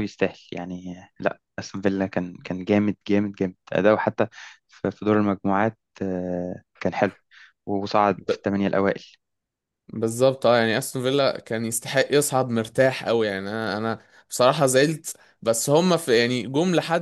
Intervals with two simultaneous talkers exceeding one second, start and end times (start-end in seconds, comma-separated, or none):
none